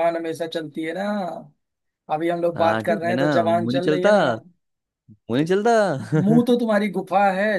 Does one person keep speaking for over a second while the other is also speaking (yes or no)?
yes